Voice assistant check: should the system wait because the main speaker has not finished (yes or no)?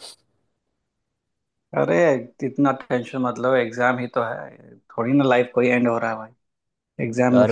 yes